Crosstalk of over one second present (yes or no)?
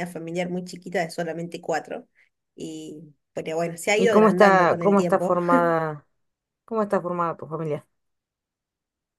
yes